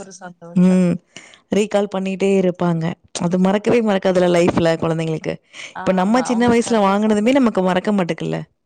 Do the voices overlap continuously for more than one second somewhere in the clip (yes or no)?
yes